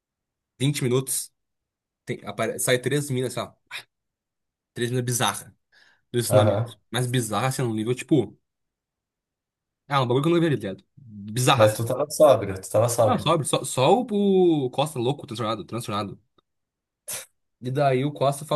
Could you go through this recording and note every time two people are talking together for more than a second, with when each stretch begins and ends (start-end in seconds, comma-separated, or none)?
none